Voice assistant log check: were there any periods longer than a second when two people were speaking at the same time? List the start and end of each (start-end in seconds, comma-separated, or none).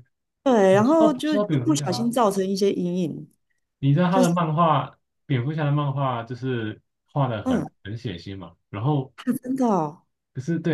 0.7-2.1